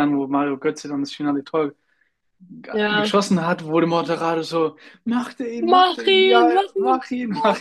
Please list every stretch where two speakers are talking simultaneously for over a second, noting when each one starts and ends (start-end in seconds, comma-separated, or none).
5.7-7.0